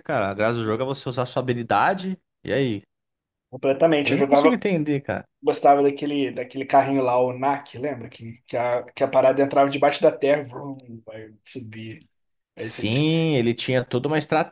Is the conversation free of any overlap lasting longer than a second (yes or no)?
yes